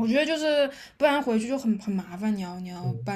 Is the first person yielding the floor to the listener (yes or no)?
yes